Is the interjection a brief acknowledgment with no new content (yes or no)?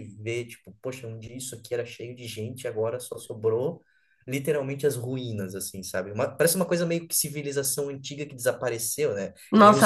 no